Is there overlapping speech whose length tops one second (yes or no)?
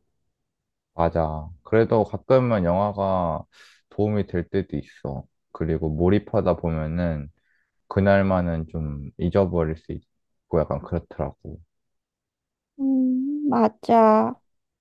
no